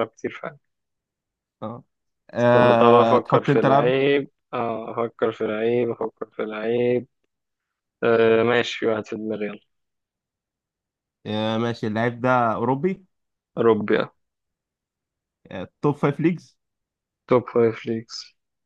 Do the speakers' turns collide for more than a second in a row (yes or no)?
yes